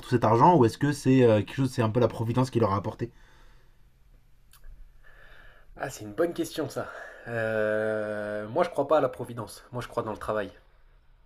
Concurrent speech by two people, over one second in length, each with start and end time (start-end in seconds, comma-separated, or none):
none